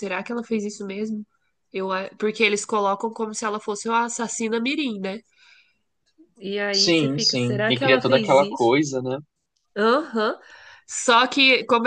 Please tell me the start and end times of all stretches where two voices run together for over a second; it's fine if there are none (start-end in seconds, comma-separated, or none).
6.7-8.7